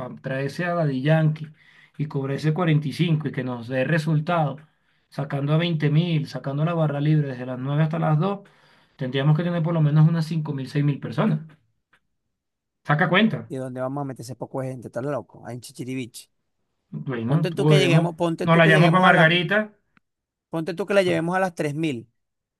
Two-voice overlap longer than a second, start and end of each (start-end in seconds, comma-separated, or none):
17.2-19.3